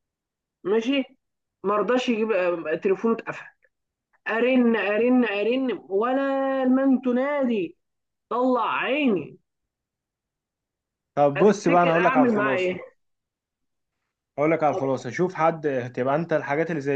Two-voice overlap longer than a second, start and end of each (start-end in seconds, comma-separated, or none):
11.4-12.8